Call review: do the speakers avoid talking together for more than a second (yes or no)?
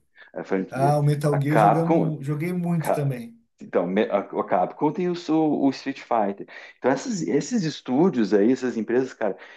no